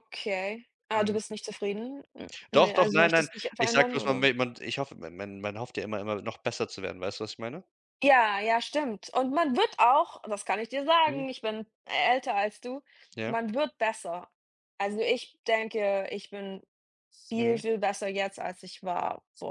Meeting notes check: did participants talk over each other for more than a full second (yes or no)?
yes